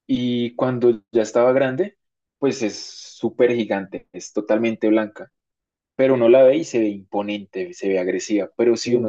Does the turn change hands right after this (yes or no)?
no